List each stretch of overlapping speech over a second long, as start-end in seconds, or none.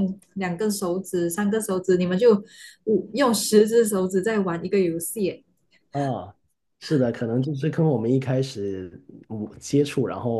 none